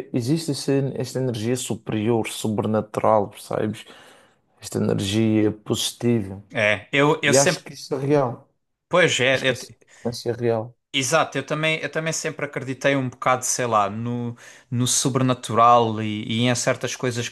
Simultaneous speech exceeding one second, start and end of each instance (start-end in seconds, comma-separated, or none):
none